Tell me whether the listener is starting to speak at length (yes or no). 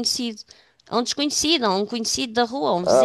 no